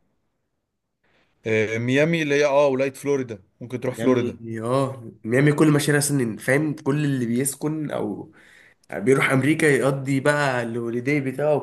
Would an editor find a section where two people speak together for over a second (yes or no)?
no